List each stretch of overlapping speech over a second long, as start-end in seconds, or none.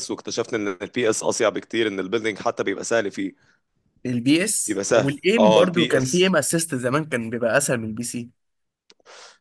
4.7-6.3